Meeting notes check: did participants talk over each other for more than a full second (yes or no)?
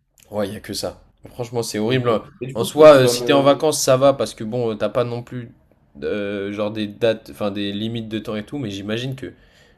yes